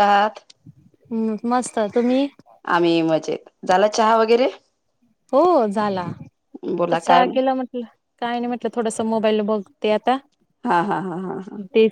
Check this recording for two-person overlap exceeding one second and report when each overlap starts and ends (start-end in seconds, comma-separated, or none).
none